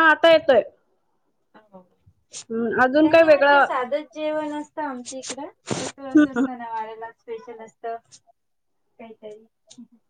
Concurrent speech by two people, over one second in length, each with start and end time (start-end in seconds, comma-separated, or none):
2.3-3.6